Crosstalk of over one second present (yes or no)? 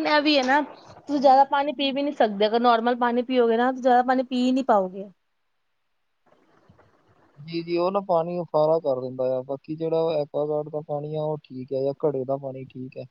no